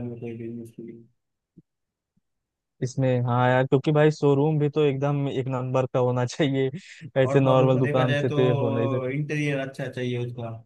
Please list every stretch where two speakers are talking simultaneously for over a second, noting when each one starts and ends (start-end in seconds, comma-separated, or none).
7.2-8.9